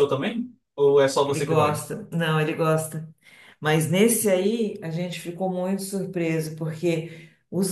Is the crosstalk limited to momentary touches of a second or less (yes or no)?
yes